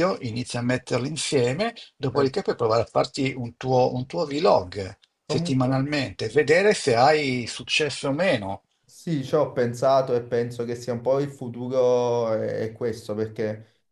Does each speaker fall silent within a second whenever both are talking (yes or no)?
yes